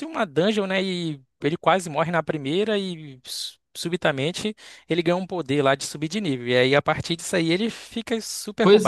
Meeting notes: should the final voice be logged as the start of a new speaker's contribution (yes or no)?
yes